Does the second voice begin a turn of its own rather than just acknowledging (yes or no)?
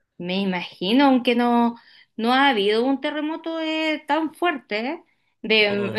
no